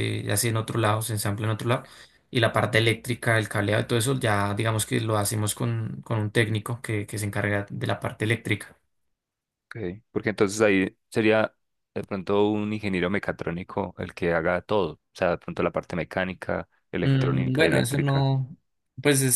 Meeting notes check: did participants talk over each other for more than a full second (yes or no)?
yes